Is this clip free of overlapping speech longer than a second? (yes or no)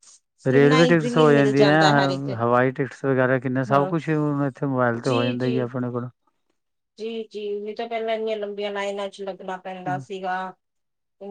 no